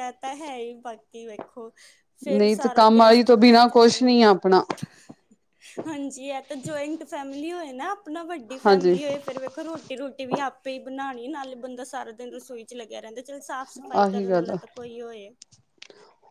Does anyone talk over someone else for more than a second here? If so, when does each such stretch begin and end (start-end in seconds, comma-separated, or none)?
2.4-4.2